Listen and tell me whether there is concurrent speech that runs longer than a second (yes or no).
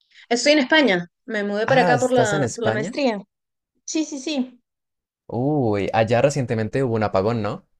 yes